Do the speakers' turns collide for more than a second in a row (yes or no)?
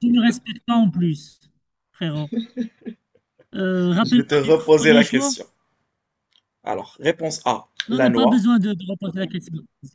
yes